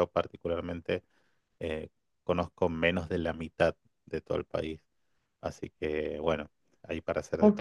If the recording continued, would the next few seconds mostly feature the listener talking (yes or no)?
yes